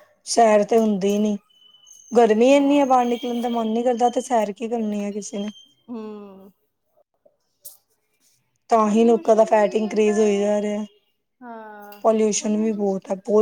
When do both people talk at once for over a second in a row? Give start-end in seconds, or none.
8.8-10.5